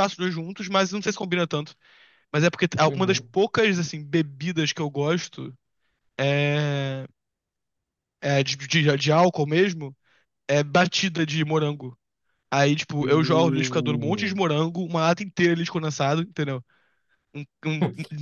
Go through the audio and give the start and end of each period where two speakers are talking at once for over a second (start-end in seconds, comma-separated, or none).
13.0-14.4